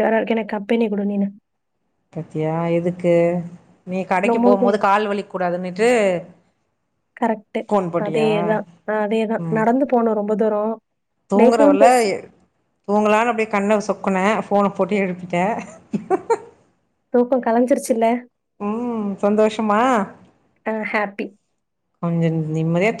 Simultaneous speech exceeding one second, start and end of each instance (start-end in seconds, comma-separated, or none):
none